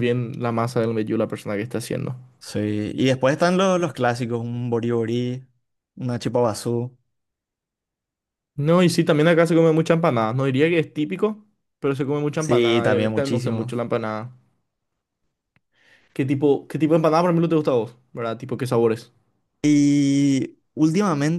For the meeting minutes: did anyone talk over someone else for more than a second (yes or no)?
yes